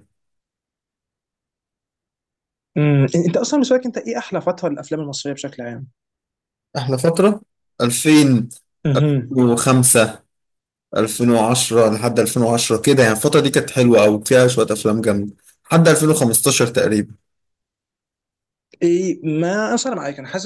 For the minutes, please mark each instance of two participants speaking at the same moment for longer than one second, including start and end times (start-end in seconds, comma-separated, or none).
none